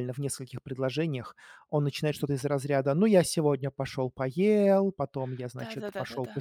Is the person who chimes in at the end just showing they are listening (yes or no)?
no